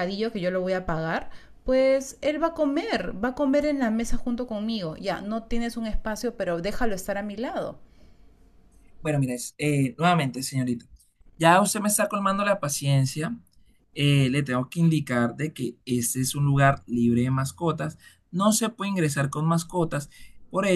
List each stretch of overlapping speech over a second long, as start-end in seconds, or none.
none